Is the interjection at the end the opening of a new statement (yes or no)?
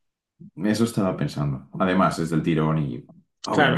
yes